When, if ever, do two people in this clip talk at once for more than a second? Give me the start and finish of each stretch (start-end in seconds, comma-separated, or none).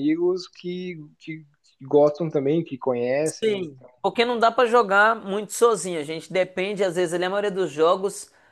none